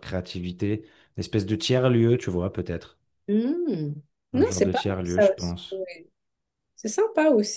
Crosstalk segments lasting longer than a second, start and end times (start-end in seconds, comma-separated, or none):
4.3-5.5